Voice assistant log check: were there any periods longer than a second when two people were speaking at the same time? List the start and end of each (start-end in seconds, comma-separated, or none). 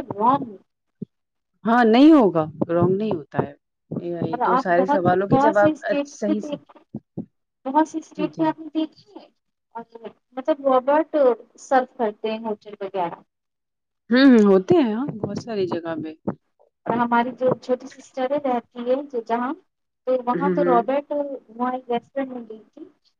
4.3-6.4